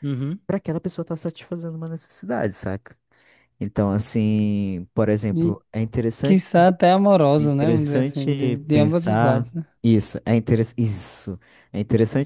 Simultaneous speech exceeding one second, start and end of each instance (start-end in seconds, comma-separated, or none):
7.4-9.7